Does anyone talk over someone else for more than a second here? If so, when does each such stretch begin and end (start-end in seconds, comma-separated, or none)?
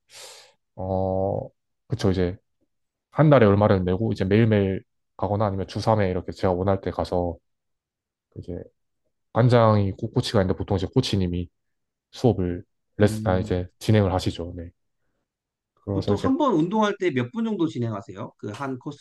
none